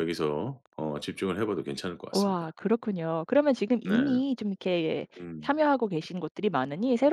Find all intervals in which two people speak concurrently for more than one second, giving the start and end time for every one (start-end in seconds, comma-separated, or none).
none